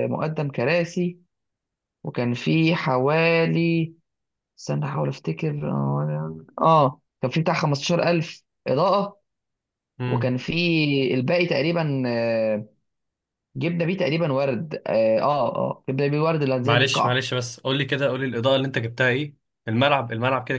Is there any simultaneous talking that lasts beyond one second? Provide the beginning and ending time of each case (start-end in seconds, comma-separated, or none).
none